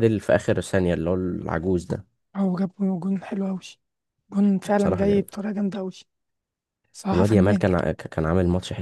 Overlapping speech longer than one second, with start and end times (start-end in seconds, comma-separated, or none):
none